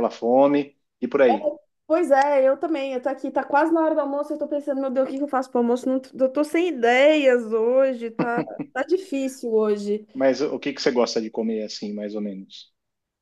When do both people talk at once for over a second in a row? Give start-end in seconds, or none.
none